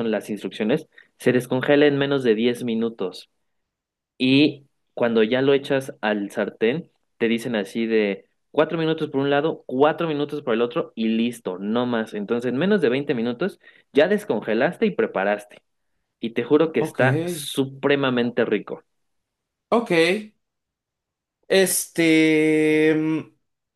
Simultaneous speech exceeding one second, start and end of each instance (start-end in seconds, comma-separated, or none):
none